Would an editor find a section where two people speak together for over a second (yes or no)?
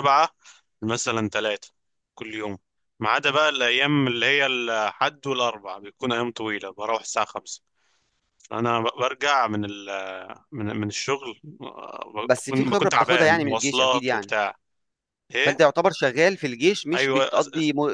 yes